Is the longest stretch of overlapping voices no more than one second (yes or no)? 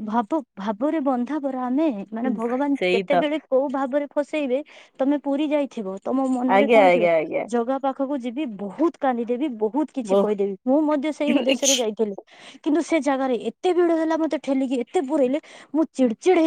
yes